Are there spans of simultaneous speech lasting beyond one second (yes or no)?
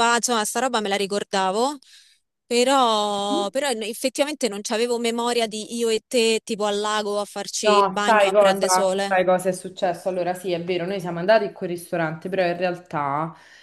yes